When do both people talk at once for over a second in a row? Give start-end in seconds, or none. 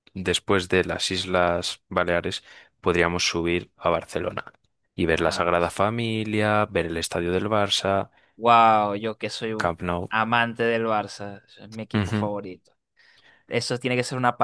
none